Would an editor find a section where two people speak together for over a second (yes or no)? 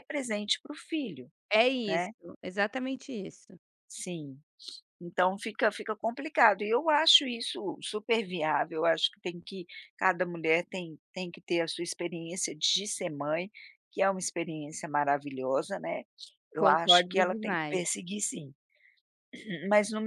yes